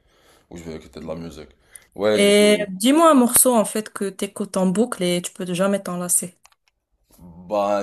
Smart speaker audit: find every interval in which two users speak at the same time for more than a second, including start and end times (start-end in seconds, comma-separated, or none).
none